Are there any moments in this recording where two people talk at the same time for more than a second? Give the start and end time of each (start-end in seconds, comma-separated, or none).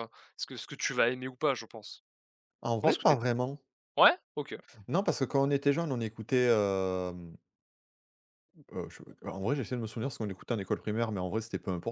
none